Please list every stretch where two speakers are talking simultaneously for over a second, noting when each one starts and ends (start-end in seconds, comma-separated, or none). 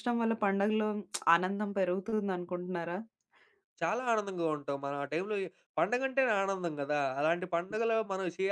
none